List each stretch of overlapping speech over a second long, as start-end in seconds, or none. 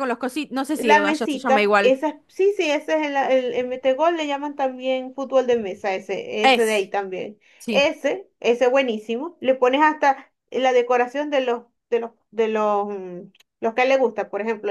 0.8-1.9